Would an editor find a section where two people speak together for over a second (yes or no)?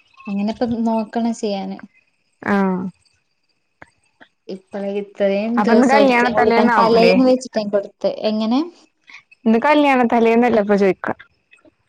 yes